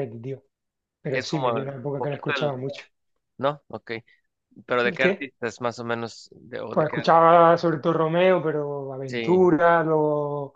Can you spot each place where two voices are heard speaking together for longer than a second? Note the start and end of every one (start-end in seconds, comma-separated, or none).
1.1-2.6